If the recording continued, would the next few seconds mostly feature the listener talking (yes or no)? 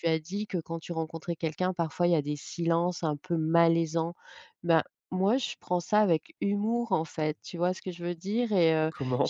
no